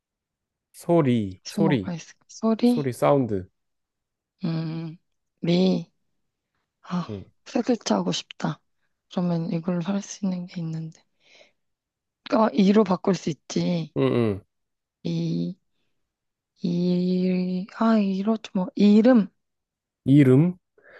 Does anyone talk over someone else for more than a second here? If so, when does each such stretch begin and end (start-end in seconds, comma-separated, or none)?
none